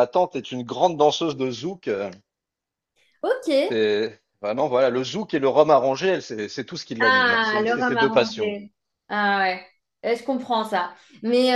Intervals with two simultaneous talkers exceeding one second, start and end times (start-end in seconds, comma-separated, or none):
7.0-8.6